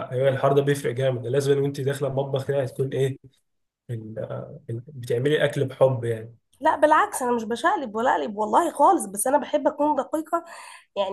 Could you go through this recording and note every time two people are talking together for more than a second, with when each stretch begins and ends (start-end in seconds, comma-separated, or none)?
none